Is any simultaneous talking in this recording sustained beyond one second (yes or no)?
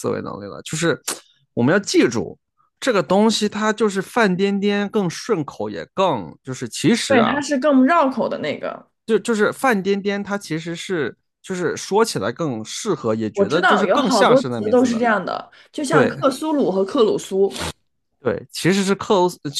yes